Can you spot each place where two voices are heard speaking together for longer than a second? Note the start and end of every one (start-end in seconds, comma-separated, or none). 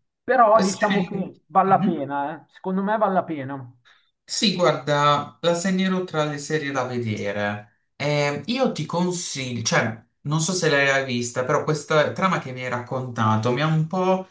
0.5-2.0